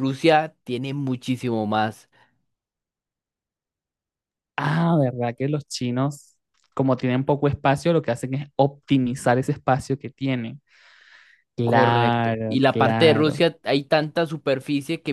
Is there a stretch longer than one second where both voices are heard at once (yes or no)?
yes